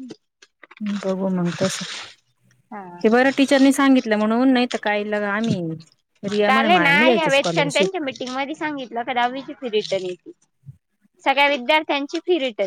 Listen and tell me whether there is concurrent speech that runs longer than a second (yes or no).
yes